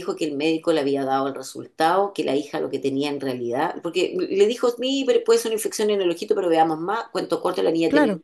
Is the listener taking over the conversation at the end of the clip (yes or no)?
no